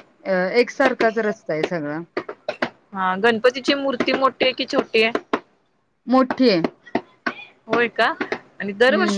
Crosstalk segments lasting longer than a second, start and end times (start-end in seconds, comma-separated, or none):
none